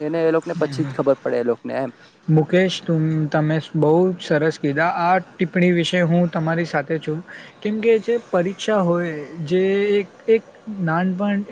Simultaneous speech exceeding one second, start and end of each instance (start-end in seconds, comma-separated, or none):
none